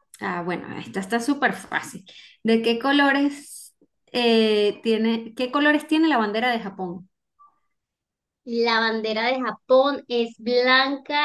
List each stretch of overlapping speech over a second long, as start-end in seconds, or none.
none